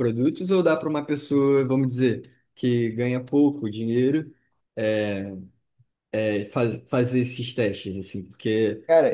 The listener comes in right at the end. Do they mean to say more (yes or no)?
no